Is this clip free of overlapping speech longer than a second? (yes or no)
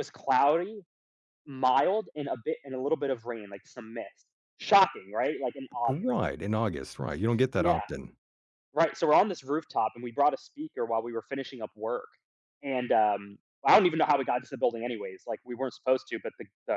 yes